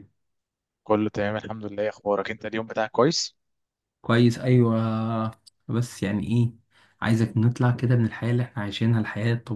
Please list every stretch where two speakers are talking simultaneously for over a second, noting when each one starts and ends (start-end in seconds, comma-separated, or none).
none